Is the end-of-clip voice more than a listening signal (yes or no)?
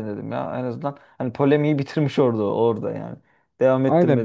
yes